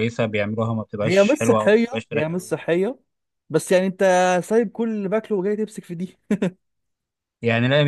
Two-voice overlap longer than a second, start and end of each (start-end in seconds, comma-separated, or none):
1.0-2.6